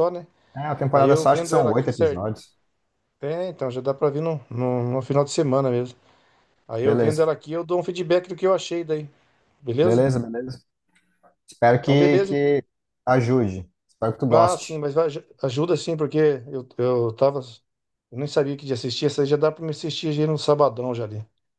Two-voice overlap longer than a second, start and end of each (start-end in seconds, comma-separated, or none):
0.9-2.2